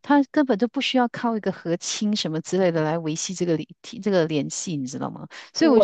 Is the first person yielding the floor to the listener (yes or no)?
no